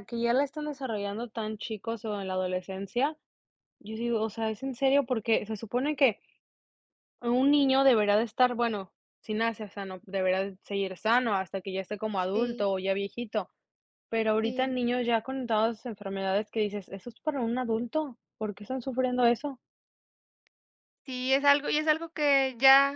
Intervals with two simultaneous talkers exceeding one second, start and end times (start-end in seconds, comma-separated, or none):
none